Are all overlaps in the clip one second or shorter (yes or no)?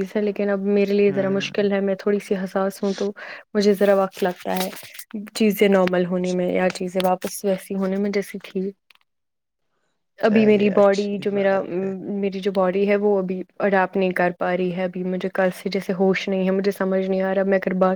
no